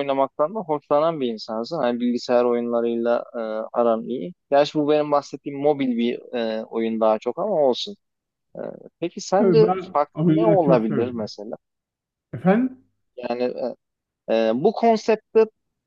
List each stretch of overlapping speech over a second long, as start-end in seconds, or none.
9.4-11.3